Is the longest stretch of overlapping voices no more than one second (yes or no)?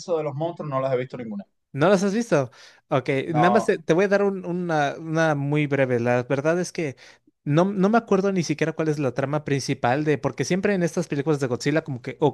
yes